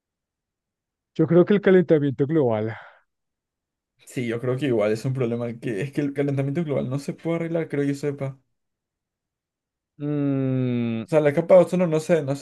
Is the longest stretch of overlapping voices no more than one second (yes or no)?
yes